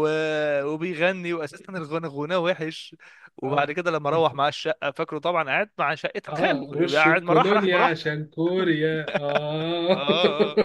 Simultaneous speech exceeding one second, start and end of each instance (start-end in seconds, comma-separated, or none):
6.3-8.1